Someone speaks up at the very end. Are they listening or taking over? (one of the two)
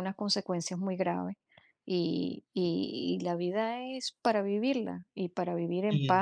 listening